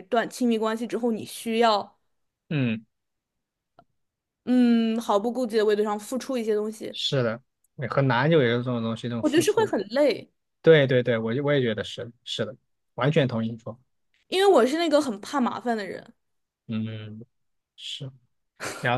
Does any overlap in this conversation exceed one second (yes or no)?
no